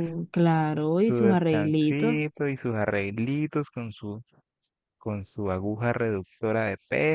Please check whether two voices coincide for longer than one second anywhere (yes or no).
yes